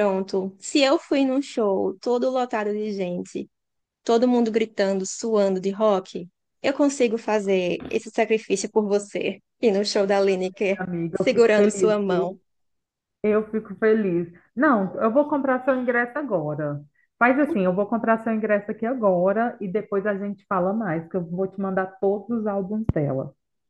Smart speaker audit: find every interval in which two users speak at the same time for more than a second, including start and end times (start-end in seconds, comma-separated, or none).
10.8-12.4